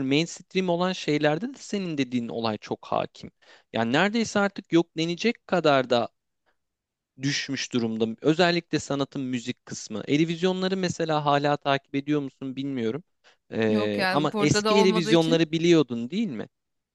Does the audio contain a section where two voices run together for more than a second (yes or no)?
yes